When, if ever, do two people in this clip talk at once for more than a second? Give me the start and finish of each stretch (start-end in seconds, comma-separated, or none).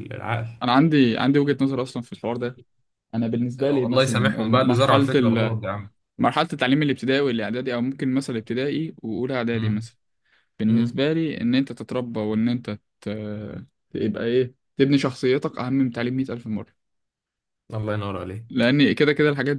3.6-5.5